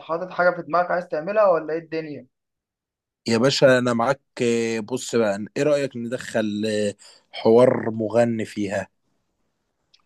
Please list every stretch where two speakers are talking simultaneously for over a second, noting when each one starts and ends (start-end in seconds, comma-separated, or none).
none